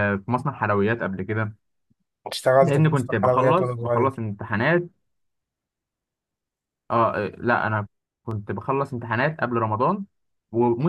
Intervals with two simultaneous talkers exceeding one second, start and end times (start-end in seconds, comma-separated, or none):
2.6-4.2